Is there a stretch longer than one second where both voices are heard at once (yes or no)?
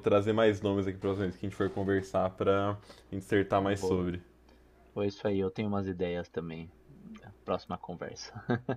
no